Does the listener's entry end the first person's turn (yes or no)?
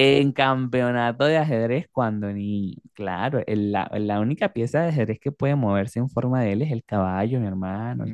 yes